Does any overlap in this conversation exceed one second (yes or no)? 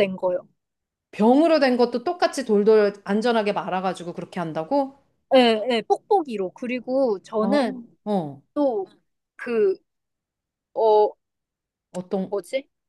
no